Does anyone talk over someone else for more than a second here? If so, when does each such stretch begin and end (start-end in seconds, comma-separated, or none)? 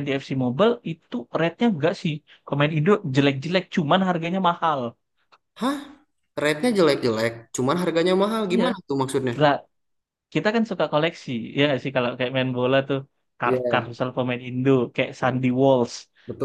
none